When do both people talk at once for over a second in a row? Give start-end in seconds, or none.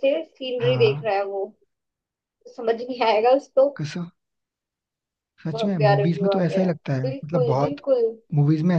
5.5-7.8